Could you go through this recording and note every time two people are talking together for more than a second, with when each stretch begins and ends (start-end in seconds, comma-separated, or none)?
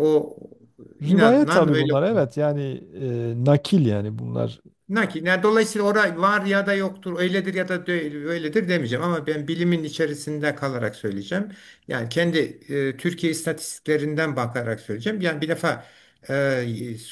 1.0-2.3